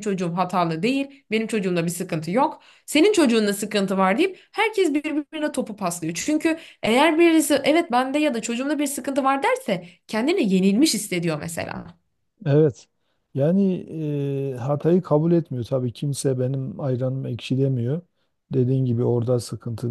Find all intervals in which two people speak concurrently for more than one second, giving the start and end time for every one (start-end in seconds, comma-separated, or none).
none